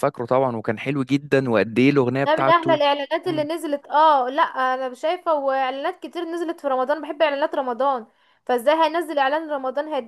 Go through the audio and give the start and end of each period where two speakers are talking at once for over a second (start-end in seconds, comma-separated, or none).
none